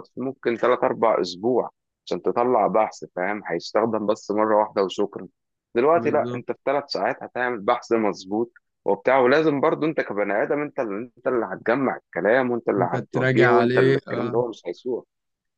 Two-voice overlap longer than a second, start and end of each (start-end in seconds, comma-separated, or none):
12.8-14.4